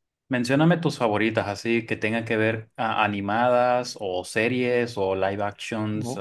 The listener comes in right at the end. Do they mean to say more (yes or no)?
no